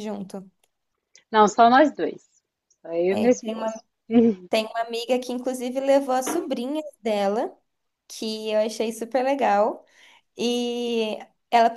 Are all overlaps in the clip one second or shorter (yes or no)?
yes